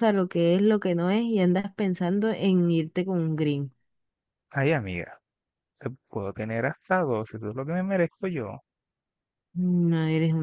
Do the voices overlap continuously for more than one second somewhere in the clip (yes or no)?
no